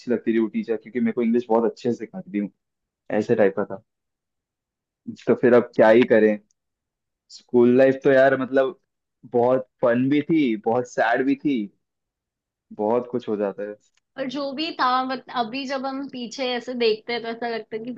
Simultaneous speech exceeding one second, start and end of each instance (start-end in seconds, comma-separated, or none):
none